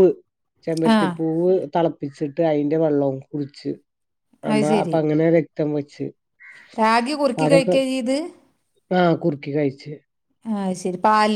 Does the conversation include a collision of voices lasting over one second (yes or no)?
no